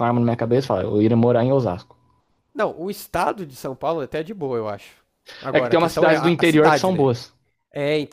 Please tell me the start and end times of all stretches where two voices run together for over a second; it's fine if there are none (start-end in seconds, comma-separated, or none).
5.5-7.1